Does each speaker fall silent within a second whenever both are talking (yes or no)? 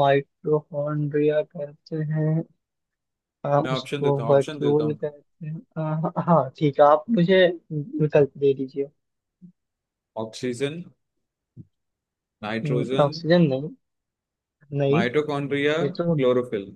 no